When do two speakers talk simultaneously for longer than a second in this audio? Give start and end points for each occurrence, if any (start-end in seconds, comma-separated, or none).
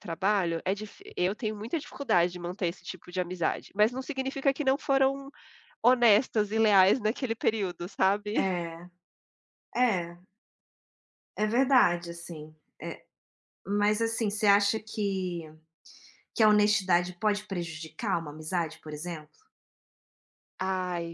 none